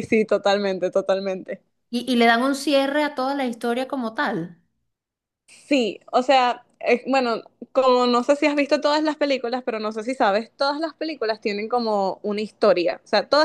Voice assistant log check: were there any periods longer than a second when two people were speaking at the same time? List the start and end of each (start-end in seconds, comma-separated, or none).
none